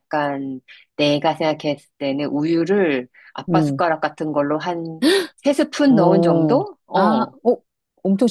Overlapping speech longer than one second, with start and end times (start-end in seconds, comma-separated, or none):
5.9-7.3